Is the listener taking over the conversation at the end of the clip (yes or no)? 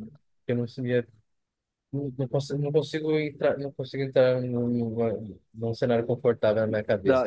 yes